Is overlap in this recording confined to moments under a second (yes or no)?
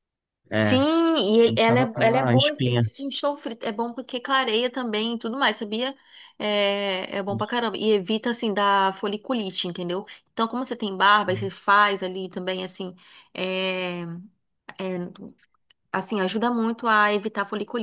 no